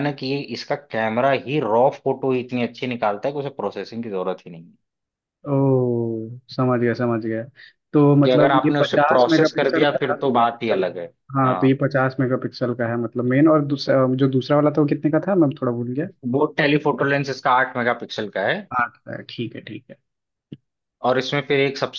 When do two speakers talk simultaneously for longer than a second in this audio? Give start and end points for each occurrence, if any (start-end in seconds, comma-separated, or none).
8.2-10.2